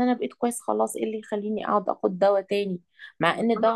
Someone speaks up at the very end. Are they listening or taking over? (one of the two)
listening